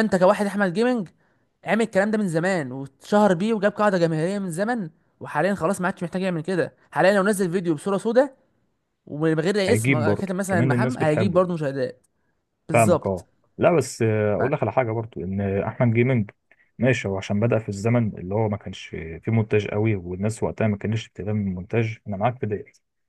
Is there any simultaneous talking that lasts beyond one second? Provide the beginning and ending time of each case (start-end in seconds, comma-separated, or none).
9.7-11.4